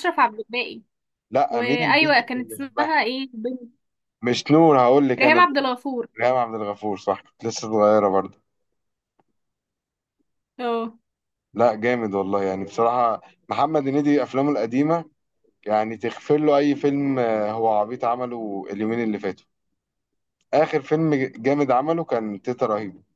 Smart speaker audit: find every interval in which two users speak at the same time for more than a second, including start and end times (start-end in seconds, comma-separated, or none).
1.5-2.9